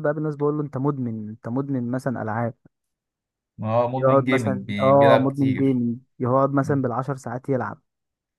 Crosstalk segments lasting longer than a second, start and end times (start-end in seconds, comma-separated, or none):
4.0-5.8